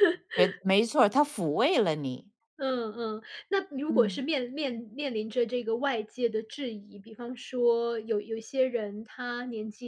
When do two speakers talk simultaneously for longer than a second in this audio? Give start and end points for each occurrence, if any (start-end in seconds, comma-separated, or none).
none